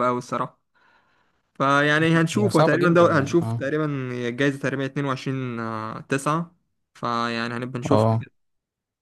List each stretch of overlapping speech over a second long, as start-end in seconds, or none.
2.4-3.7